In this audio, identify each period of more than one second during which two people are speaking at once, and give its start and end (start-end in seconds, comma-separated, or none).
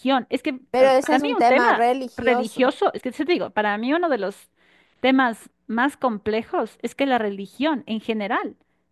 0.7-2.7